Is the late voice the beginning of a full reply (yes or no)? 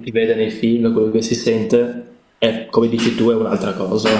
yes